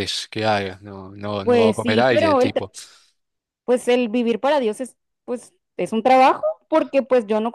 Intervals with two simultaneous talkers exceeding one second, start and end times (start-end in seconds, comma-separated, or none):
1.4-2.7